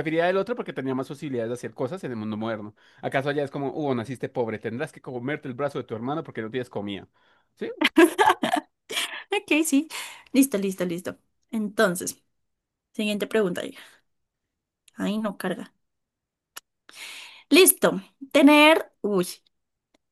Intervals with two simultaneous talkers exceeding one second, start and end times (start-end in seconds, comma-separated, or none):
none